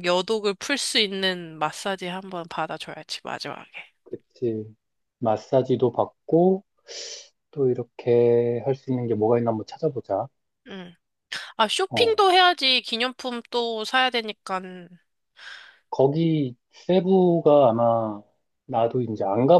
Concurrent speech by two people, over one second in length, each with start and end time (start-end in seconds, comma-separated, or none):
none